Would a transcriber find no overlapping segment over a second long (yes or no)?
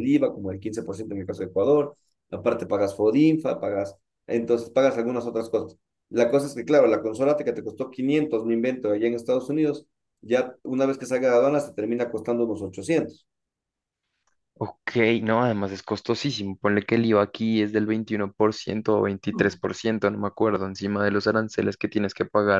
yes